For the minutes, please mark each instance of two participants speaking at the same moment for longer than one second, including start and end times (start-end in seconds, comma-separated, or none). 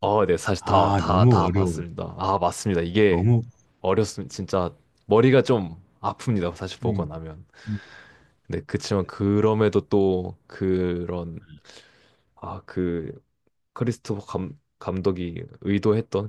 0.6-1.8